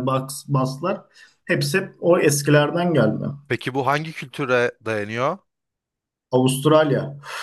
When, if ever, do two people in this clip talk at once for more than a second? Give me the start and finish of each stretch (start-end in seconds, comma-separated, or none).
none